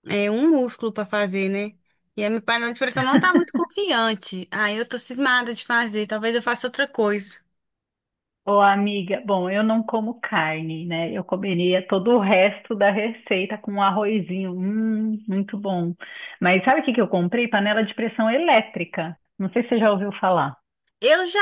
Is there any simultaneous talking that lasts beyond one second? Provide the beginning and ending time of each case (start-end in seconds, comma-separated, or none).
none